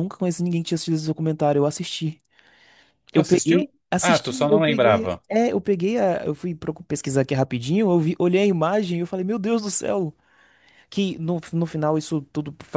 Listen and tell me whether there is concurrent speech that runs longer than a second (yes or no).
yes